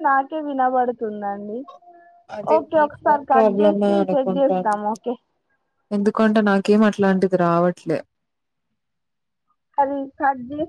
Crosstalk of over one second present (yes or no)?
yes